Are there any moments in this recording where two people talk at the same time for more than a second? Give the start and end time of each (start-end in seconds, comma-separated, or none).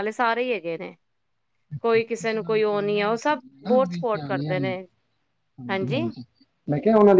2.7-4.5